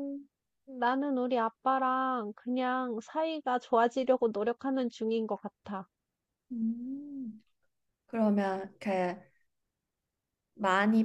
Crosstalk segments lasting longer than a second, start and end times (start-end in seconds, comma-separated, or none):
none